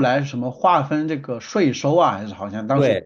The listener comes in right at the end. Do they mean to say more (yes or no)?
yes